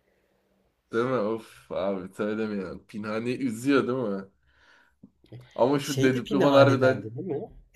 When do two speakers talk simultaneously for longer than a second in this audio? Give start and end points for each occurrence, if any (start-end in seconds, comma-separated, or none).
5.8-7.1